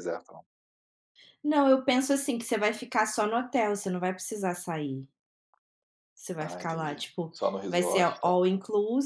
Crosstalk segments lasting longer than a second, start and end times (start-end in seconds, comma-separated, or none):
6.4-8.4